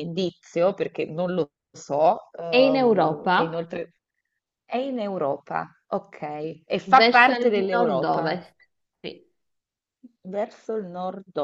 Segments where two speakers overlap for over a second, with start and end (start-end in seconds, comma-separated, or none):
2.5-3.7, 6.9-8.3